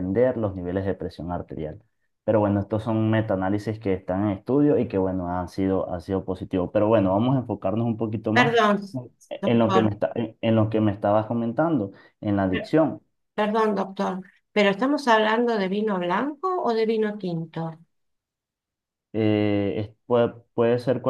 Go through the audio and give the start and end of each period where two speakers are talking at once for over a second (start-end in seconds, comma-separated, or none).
none